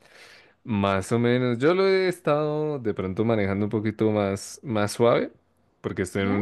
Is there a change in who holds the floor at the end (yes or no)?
no